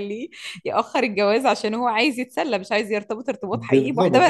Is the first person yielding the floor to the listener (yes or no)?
yes